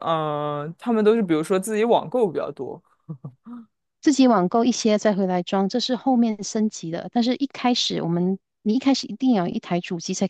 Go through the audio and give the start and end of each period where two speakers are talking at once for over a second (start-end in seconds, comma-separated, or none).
none